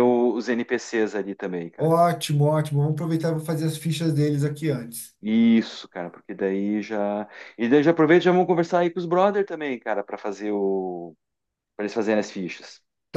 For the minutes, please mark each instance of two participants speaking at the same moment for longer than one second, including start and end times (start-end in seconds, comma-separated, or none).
none